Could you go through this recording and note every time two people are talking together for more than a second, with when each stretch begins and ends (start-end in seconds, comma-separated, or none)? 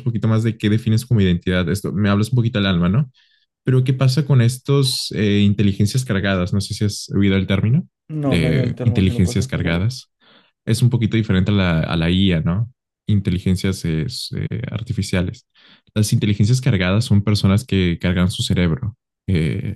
8.2-9.7